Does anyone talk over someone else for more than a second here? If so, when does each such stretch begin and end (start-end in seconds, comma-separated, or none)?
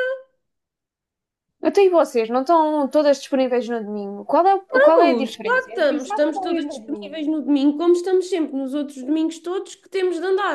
4.7-7.3